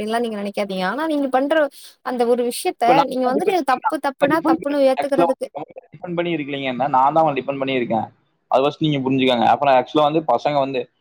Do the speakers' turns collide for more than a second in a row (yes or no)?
no